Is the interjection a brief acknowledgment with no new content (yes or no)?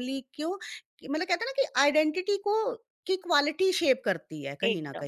no